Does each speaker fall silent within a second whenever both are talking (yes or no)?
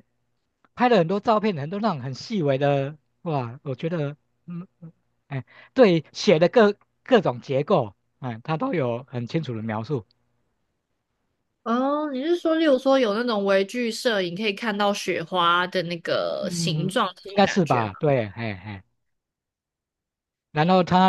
no